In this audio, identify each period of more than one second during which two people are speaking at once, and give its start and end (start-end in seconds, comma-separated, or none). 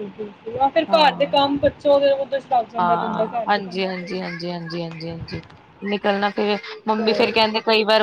2.8-4.2